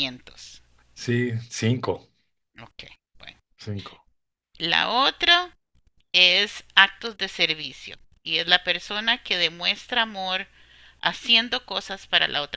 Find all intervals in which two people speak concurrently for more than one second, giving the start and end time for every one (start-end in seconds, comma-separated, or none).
none